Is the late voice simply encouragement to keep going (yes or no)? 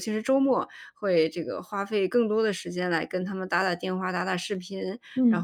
yes